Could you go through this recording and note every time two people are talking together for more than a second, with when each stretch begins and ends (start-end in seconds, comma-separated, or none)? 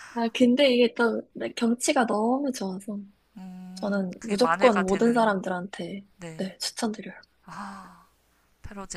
3.7-5.4